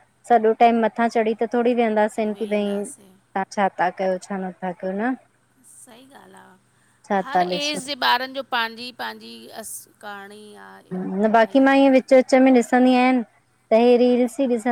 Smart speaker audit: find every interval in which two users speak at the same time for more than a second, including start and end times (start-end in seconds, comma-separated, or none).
none